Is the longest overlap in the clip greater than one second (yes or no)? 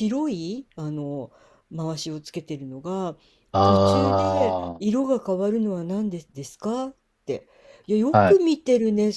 yes